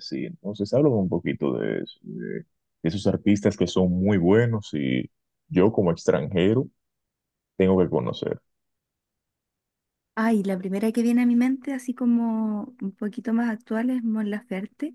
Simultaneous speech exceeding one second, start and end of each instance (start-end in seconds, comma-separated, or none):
none